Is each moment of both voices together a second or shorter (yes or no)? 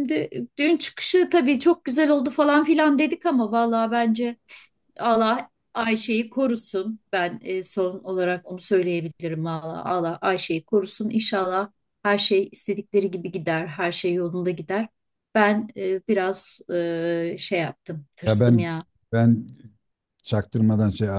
yes